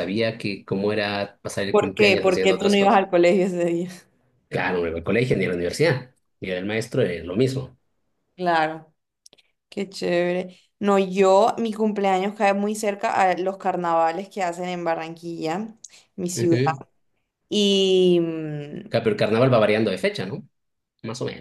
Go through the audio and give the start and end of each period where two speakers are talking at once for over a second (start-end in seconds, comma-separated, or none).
1.7-3.0